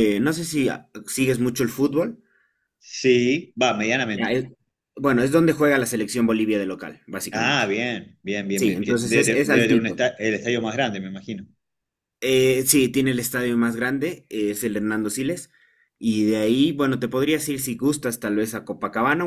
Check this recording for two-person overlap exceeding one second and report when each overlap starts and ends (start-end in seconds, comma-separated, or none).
8.5-10.0